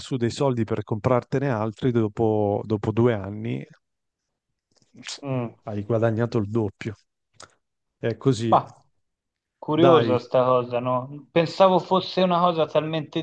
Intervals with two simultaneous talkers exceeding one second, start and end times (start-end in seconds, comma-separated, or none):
none